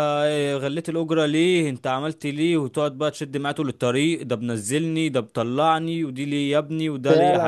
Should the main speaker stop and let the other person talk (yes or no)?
yes